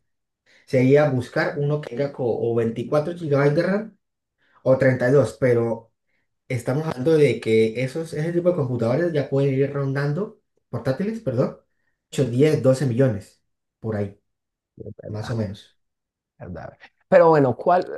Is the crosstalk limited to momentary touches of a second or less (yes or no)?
yes